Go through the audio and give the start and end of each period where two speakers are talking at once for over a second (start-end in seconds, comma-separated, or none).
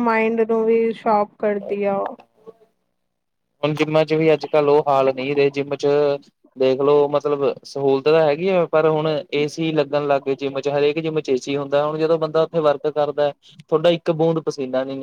none